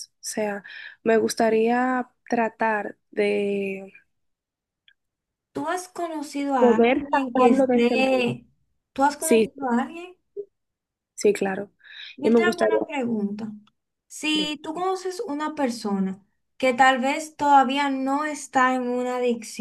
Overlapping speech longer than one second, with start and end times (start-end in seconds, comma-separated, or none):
6.6-8.3